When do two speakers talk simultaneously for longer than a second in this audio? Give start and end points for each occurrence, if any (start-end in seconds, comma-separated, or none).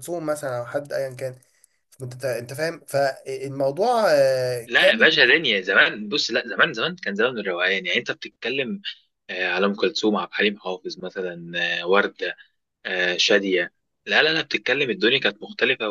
none